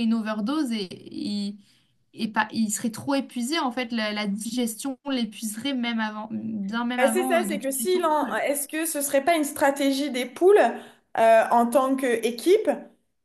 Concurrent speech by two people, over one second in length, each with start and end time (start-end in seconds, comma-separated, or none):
7.0-8.4